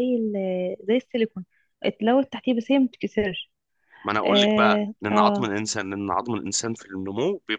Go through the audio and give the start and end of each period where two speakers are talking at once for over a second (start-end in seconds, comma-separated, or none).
4.2-5.5